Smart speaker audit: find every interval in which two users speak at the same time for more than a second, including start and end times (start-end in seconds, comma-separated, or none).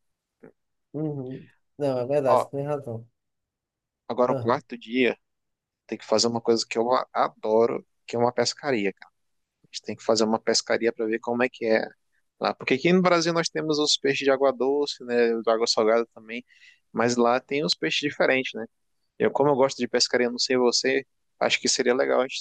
none